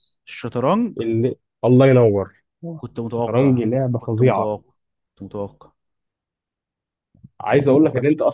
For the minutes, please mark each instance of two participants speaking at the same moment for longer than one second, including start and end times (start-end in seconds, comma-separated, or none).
3.1-4.5